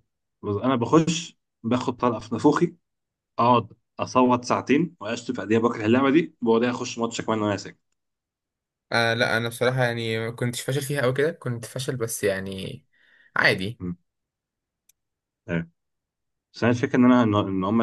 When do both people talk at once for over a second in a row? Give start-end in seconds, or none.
none